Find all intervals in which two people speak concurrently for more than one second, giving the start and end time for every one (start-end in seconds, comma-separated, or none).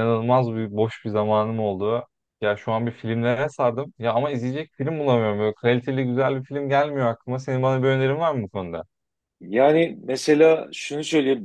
none